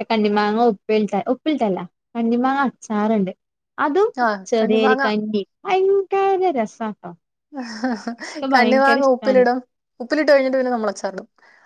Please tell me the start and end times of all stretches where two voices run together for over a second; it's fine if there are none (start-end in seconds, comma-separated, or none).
none